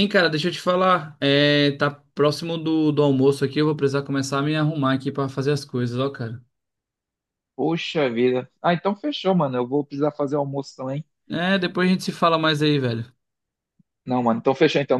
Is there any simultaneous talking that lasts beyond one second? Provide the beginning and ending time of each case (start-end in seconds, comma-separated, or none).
none